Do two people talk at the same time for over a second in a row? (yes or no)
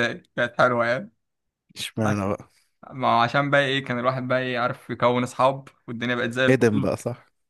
no